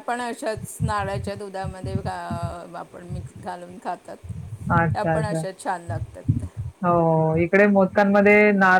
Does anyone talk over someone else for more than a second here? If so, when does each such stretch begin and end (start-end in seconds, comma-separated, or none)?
none